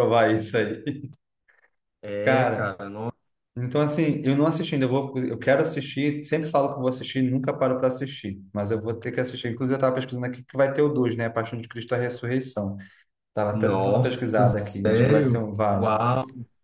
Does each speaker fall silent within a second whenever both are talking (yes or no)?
no